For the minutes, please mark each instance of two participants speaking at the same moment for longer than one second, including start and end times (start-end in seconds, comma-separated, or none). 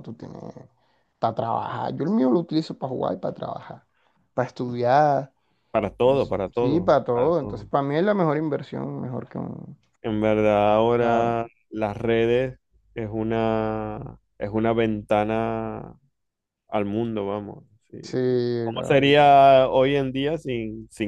6.0-7.7